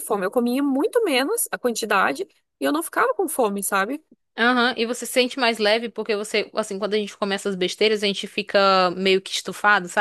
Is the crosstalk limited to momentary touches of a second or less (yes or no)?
yes